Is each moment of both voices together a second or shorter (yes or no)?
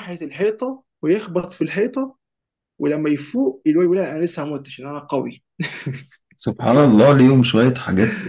yes